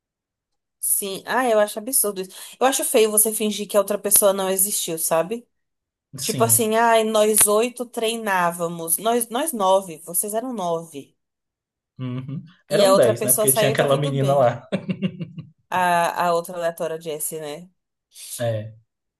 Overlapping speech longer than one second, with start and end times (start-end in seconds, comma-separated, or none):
12.7-14.5